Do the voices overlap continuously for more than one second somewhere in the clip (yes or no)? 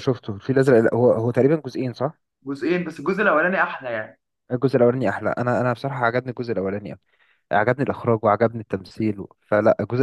no